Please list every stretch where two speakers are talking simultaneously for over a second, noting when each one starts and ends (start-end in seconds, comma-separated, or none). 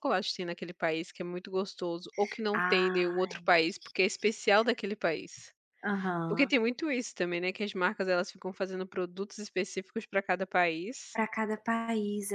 none